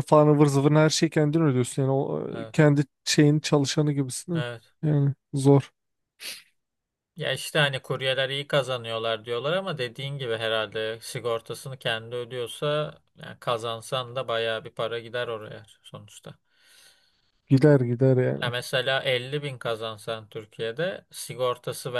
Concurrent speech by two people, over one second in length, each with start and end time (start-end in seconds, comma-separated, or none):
none